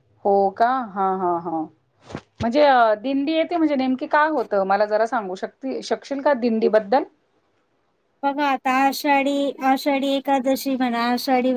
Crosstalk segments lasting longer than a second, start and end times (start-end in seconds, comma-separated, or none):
none